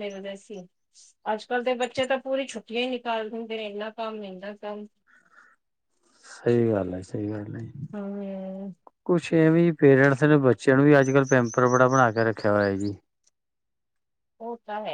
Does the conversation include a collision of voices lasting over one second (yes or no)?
no